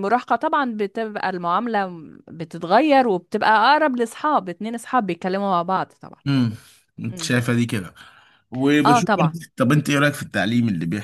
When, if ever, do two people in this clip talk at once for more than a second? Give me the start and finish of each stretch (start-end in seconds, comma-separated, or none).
none